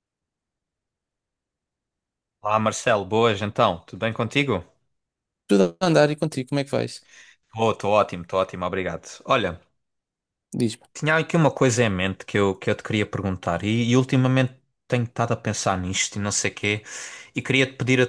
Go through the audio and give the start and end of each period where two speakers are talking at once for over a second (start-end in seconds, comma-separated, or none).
none